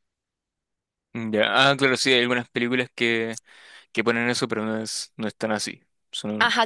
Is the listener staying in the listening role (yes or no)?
no